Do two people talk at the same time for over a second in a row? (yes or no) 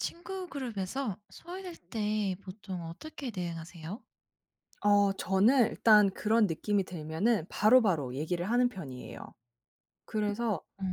no